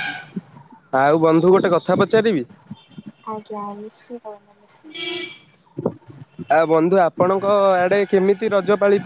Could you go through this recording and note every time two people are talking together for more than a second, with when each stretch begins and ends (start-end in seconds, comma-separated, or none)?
none